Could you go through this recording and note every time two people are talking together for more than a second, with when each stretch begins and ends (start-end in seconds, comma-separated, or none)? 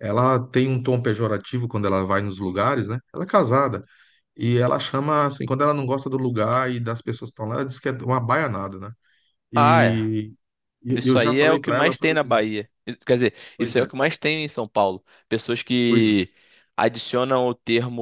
10.9-12.5